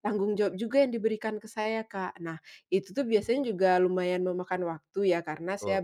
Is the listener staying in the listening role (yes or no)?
yes